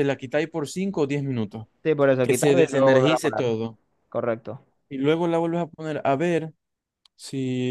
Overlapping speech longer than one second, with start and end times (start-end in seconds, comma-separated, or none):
2.2-3.4